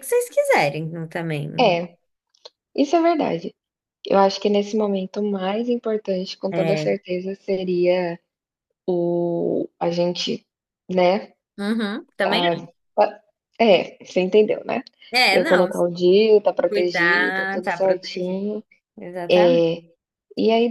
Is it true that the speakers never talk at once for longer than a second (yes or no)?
no